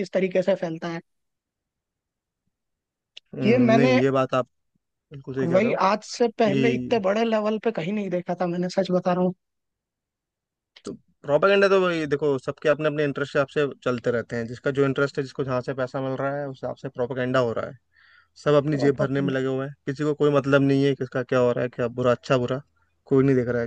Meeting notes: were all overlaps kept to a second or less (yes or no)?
yes